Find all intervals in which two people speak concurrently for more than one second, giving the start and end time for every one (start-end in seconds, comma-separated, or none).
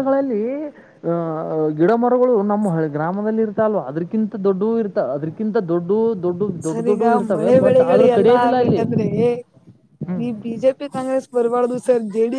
6.7-8.8